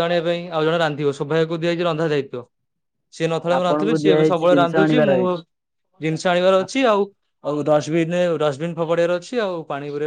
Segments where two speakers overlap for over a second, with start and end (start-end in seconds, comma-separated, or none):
3.5-5.1